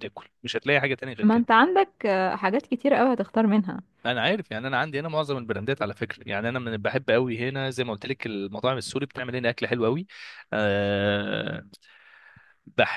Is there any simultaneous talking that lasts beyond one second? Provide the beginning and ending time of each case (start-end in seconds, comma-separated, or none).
none